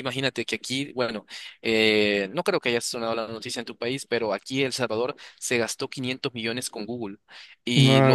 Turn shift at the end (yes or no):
no